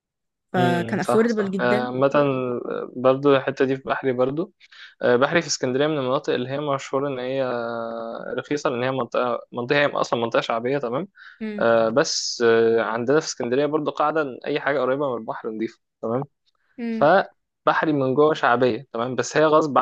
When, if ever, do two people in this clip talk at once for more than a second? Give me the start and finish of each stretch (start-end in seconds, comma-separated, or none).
0.6-1.9